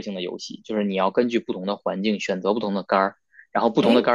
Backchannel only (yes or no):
yes